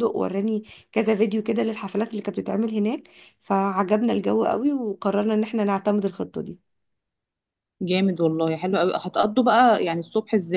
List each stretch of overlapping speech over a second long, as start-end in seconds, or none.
none